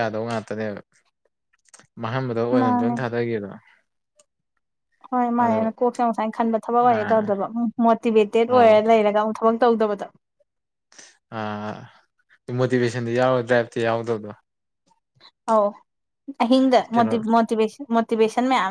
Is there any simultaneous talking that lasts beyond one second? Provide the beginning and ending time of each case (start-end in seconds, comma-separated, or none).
none